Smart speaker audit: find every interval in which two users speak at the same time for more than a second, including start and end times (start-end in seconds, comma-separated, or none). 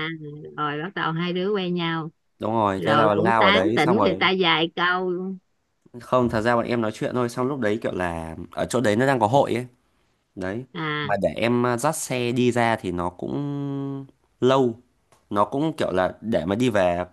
2.8-4.2